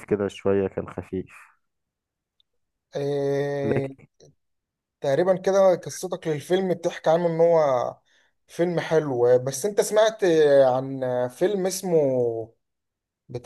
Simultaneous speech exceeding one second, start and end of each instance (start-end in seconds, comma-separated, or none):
none